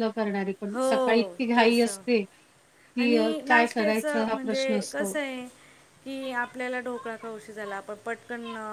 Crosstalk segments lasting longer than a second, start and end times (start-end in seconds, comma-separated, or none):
3.0-5.1